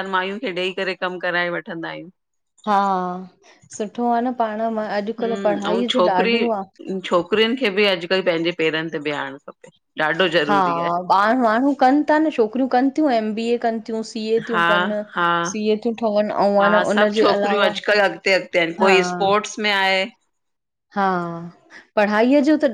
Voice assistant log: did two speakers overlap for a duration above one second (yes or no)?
no